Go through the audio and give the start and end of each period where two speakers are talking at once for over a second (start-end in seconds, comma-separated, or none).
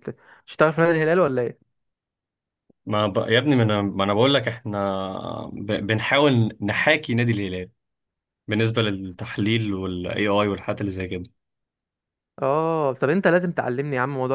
none